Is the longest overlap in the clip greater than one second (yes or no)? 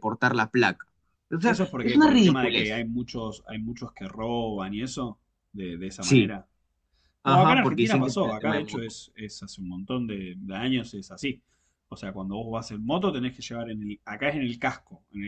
yes